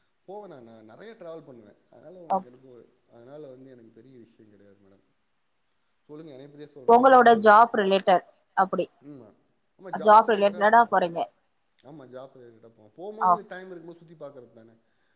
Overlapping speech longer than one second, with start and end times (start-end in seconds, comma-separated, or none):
none